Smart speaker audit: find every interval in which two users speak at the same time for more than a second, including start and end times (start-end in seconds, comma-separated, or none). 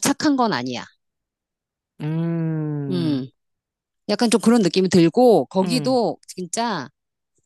none